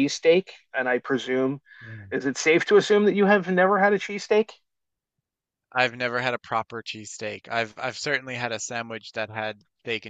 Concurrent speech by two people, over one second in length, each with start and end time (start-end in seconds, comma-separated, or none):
none